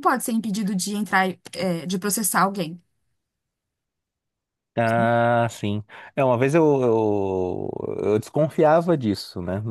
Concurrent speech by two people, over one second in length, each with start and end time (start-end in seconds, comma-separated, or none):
none